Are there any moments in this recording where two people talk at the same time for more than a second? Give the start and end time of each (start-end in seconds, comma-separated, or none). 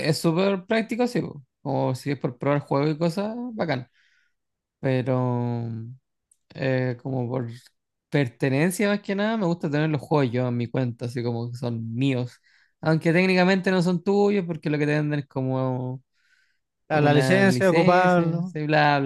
16.9-18.5